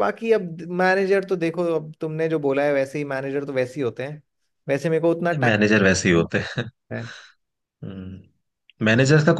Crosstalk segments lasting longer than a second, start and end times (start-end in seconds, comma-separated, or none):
none